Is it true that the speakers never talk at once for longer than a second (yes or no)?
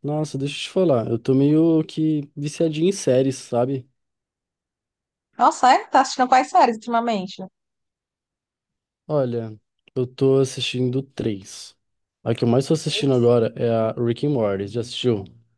yes